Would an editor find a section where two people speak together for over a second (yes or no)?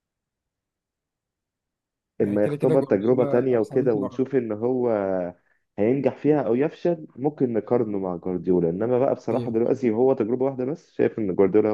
yes